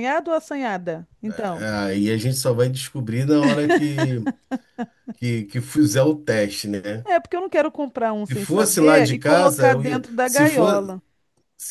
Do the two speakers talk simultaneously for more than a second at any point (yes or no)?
yes